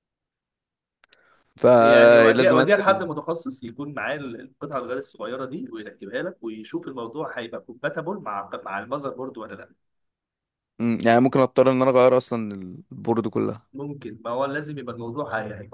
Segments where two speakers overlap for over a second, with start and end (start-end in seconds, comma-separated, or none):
1.8-3.0